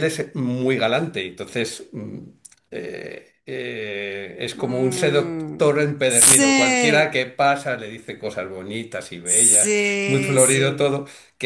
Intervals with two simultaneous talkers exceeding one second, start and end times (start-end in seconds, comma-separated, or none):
4.5-7.2, 9.2-11.0